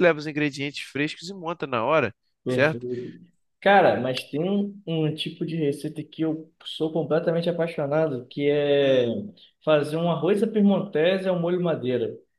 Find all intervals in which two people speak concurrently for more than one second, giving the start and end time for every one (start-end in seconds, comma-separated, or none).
none